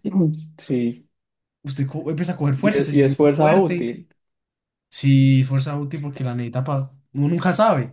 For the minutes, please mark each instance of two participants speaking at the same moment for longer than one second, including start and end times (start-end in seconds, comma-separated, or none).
2.6-4.0